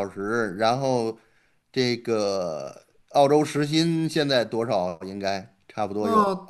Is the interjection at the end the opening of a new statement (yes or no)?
yes